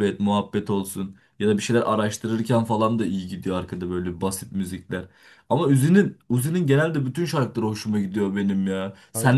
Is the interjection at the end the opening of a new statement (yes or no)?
no